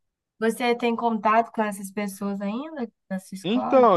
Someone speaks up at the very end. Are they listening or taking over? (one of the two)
taking over